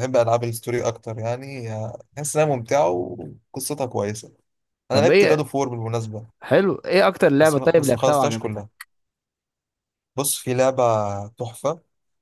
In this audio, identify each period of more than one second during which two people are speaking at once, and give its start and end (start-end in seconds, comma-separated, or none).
7.4-8.7